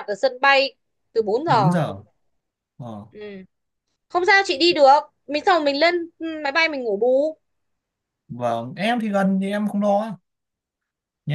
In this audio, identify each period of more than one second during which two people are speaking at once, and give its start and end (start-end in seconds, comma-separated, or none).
none